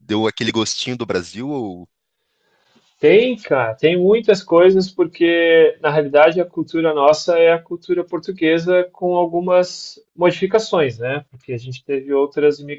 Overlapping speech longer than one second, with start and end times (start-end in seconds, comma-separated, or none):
none